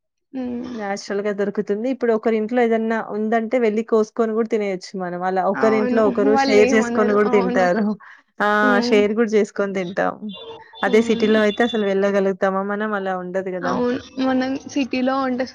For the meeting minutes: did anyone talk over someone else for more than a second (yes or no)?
yes